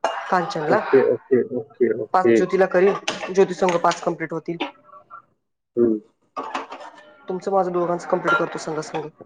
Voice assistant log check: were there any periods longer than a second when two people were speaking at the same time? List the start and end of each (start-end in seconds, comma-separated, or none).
none